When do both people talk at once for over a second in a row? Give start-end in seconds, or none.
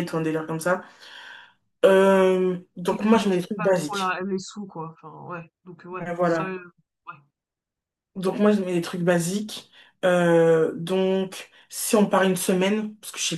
2.9-4.2